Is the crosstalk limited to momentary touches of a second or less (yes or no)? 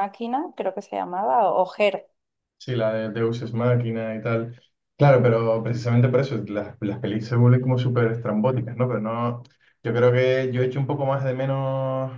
yes